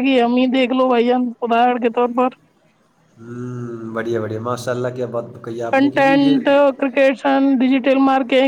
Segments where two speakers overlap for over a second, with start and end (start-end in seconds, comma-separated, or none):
none